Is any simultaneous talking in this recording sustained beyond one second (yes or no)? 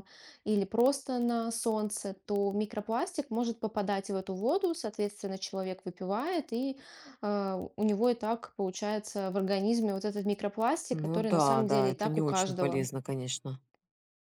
yes